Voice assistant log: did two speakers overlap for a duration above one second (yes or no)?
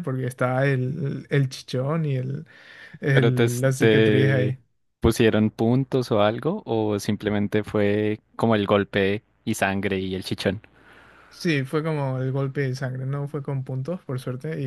yes